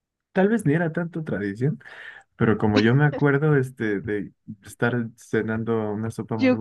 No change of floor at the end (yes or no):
no